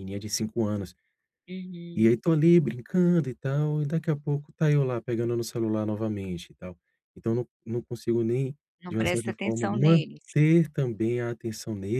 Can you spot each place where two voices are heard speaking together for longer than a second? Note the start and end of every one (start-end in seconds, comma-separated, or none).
8.8-10.3